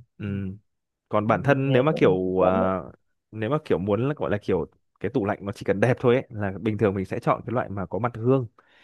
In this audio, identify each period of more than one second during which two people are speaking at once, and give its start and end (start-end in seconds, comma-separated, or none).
1.2-2.8